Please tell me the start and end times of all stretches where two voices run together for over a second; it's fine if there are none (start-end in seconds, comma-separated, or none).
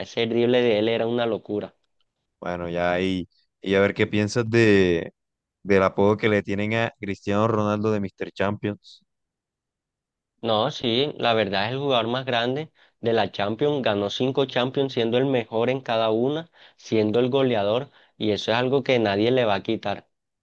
none